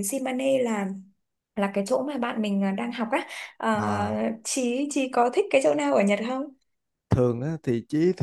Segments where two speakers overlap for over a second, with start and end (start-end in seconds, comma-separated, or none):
none